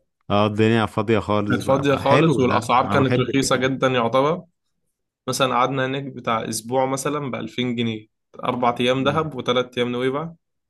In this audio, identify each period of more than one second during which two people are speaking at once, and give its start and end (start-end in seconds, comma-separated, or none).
1.5-3.6